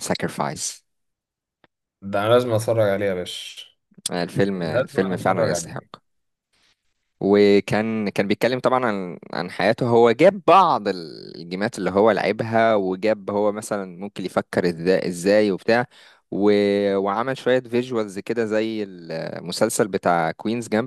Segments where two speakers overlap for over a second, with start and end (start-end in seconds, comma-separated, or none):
4.5-5.8